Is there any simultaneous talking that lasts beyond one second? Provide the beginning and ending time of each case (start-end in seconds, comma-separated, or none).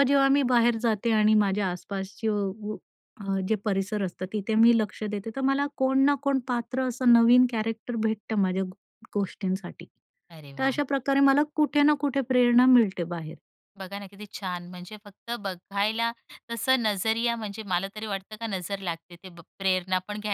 none